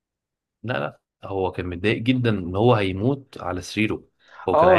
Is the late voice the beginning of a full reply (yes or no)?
yes